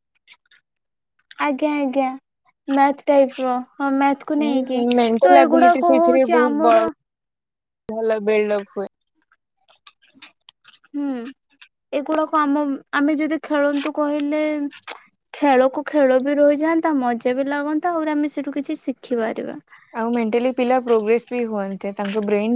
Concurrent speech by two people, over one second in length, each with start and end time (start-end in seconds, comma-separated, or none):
4.4-6.8